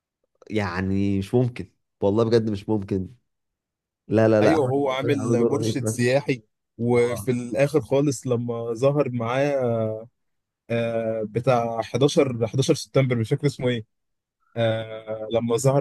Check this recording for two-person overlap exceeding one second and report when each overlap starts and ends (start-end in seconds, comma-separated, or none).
4.4-6.0